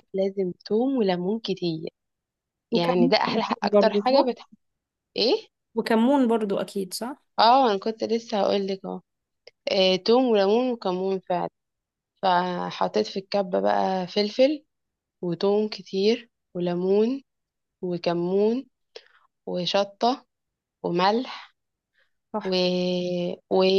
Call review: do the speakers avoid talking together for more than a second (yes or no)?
no